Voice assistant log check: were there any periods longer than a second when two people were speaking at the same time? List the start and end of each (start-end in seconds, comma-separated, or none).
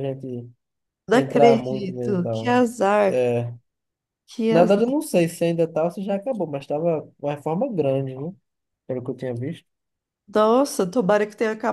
1.1-2.5